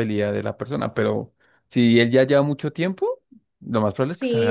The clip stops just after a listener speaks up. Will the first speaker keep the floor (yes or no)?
no